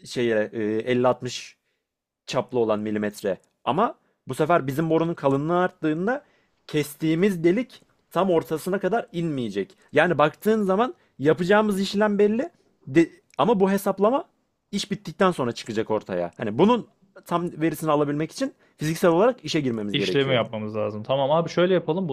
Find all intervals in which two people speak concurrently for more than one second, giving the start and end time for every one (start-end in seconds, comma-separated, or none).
none